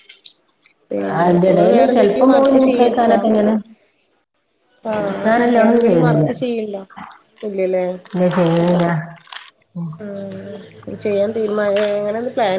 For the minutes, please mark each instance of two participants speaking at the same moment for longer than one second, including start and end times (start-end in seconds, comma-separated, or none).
1.2-3.2